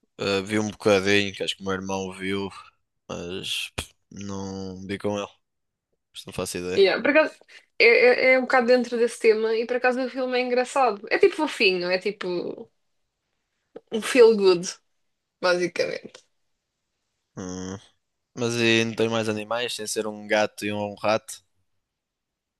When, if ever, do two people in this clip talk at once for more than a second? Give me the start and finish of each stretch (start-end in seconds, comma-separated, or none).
none